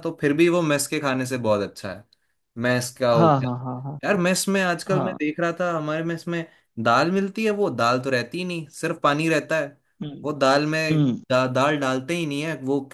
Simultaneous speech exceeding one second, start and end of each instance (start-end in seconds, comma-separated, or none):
none